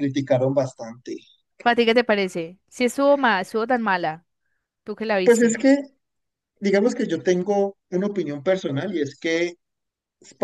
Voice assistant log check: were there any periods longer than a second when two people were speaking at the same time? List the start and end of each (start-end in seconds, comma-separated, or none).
none